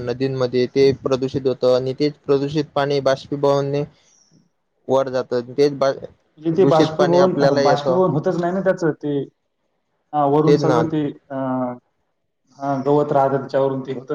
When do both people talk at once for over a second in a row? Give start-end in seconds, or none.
6.6-8.0